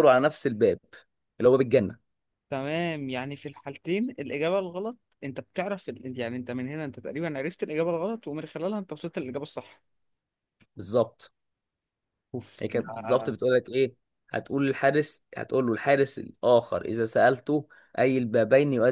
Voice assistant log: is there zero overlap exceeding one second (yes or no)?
yes